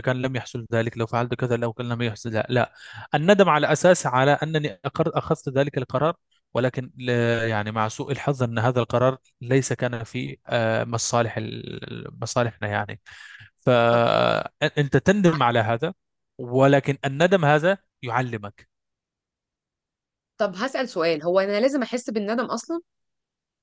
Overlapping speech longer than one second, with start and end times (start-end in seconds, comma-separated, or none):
none